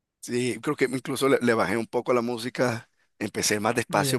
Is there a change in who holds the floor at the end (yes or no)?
no